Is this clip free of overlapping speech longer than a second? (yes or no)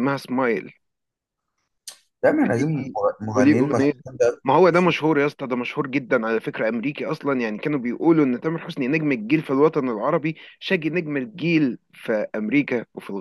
yes